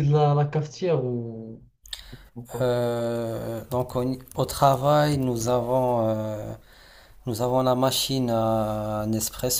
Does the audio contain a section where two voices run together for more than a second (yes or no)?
no